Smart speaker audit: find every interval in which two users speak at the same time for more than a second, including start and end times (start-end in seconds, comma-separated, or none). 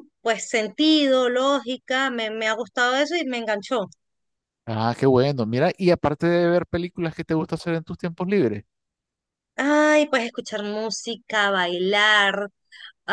none